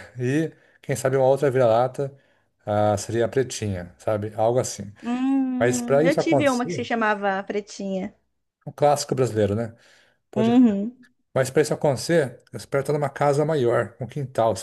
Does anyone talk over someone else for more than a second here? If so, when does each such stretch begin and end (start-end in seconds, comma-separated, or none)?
5.6-6.8